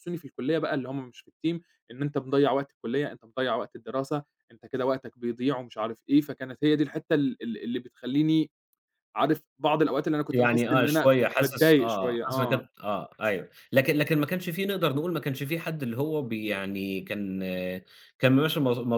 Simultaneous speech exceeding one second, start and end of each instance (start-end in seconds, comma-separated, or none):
10.3-12.6